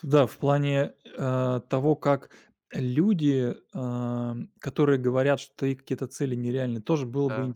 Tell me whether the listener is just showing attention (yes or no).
yes